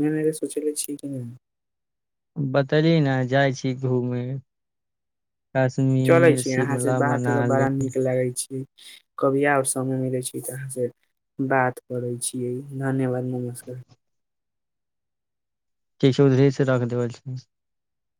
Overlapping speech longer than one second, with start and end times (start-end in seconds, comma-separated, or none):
6.1-7.7